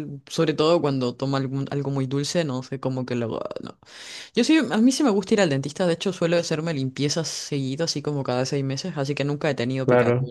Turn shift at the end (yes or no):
no